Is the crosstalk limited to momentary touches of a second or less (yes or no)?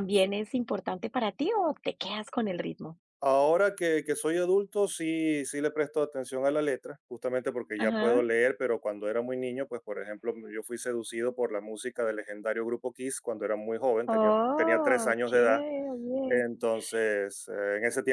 no